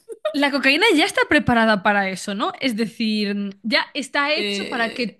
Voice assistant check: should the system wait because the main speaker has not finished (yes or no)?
yes